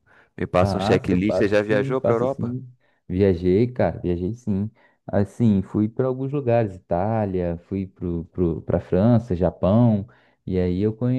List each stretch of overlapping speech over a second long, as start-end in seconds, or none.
0.6-2.6